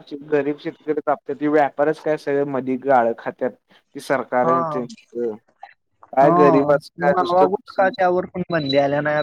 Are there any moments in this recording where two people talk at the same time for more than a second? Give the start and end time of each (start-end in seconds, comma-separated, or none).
6.2-8.1